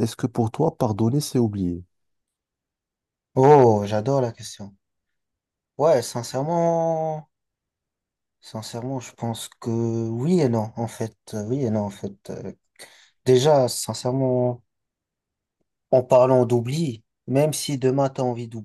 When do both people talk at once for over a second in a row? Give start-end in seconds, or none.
none